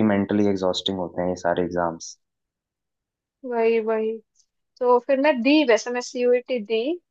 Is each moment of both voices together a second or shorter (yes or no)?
yes